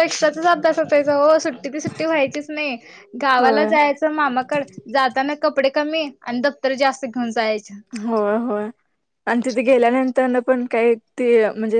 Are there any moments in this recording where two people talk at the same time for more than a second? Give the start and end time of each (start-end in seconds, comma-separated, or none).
none